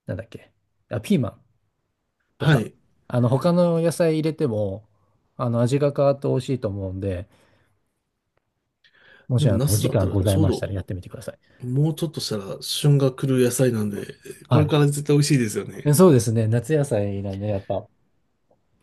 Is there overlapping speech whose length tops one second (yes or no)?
yes